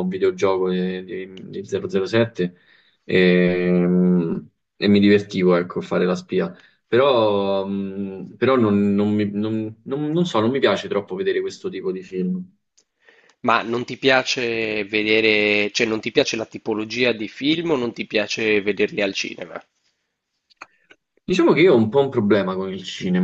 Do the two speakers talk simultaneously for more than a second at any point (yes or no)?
no